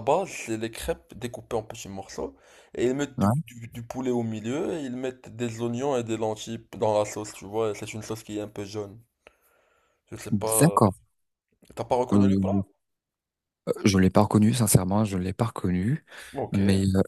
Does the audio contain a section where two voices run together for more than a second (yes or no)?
no